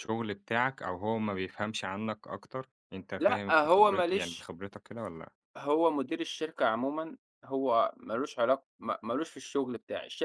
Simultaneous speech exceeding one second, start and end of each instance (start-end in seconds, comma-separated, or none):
3.2-4.5